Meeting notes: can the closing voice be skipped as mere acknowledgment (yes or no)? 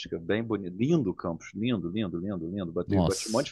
yes